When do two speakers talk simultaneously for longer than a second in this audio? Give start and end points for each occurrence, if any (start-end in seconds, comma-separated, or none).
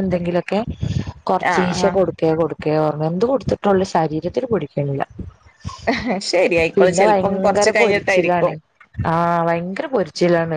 6.8-8.5